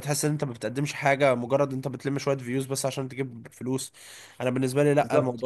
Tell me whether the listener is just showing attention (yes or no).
no